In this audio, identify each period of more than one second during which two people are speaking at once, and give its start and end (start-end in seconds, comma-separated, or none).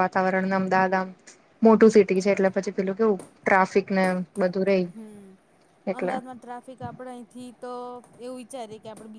none